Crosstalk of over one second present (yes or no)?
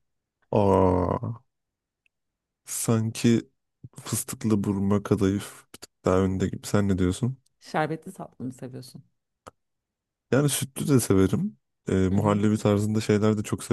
no